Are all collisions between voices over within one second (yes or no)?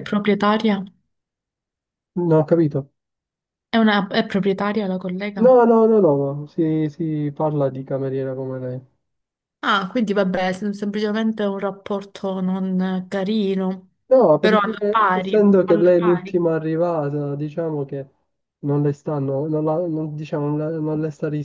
no